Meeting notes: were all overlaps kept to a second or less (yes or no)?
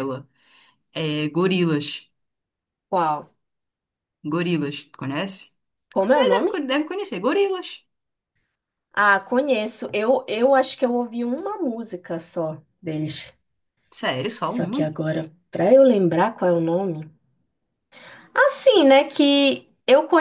yes